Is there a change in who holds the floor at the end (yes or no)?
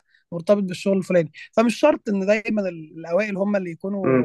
yes